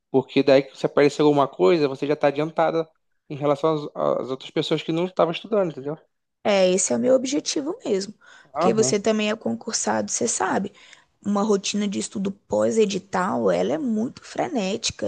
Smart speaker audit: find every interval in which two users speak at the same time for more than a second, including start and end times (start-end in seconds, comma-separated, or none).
none